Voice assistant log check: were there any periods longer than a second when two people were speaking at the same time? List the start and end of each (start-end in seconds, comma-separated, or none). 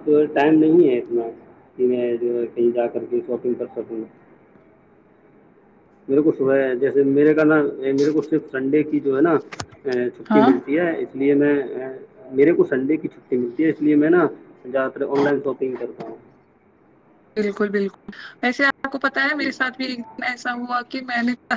none